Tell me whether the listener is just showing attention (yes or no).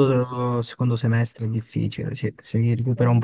yes